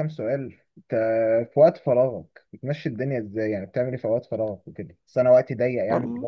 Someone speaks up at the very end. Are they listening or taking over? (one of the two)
listening